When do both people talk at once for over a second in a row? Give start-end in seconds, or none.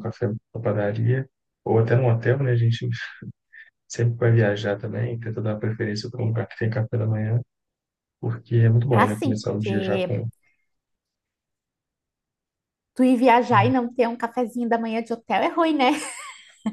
8.9-10.2